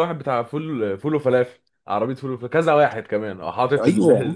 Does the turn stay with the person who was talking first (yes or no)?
yes